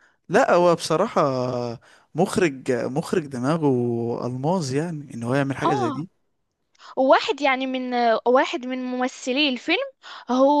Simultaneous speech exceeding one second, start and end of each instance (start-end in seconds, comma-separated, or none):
none